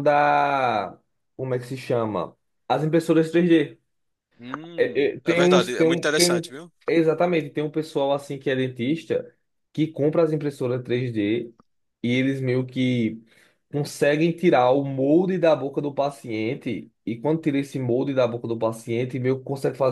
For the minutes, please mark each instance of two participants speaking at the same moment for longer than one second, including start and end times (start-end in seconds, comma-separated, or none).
4.8-6.4